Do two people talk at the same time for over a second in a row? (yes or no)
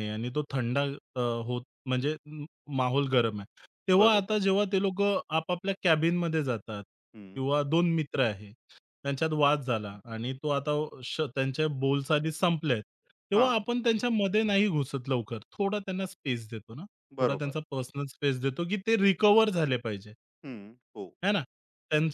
no